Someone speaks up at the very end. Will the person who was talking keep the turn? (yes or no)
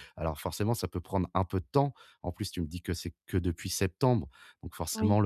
yes